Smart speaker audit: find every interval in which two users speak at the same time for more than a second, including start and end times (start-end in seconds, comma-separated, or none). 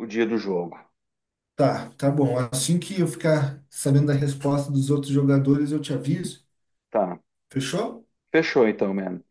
none